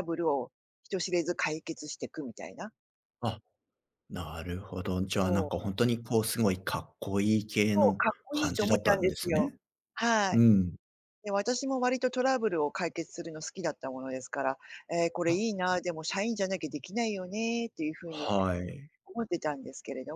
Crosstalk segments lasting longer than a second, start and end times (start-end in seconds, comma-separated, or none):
7.7-9.5